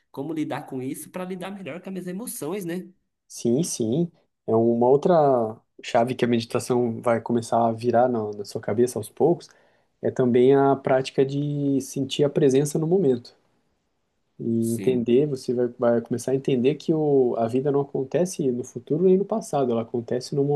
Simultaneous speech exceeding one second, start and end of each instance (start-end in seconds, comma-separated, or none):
none